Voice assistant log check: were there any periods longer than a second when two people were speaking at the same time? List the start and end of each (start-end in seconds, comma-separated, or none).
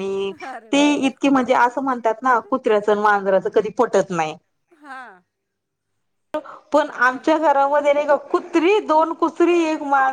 none